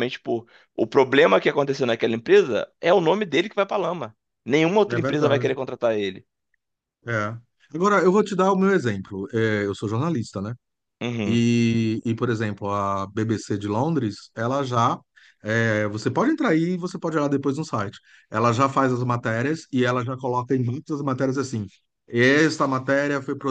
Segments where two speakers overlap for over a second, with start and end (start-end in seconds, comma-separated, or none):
none